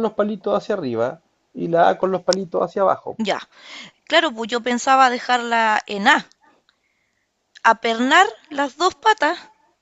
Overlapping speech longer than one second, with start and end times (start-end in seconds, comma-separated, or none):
none